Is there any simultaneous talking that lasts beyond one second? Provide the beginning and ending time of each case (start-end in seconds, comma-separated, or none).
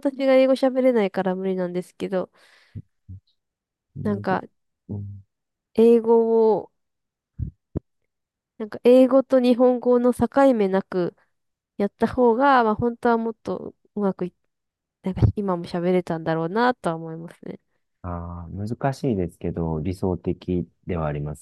none